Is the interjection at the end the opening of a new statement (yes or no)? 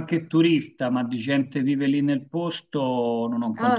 yes